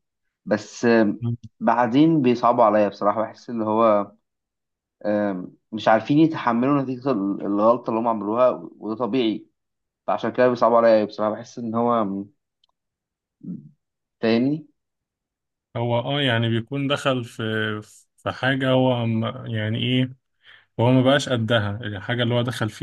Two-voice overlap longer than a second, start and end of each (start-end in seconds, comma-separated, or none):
none